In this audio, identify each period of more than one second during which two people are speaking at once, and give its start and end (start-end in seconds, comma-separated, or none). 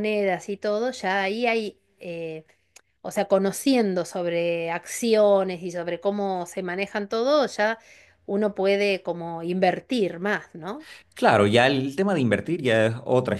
none